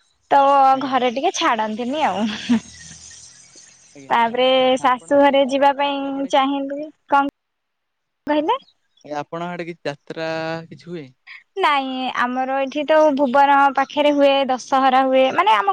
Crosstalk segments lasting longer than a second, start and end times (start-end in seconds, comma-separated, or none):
4.9-6.5